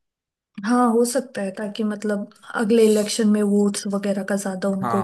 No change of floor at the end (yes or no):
no